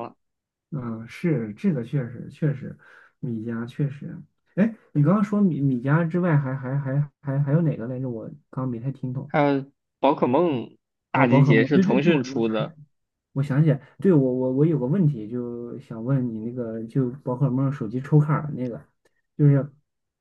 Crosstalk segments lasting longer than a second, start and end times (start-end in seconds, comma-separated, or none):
11.1-12.7